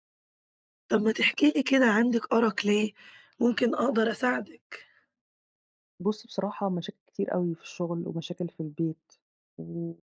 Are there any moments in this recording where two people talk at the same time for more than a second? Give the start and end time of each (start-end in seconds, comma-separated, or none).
none